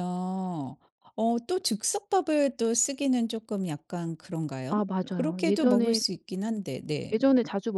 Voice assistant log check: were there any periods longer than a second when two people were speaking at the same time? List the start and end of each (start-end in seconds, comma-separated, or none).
4.7-6.0